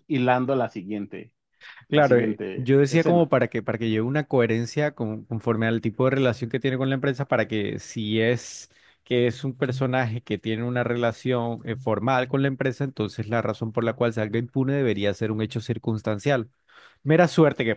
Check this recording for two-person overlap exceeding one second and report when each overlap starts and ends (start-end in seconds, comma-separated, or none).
1.9-3.3